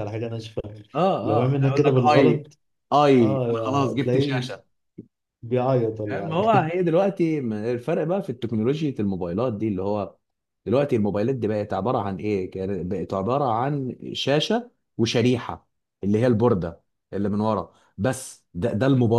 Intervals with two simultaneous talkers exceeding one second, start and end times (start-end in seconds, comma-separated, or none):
1.2-2.5, 3.2-4.4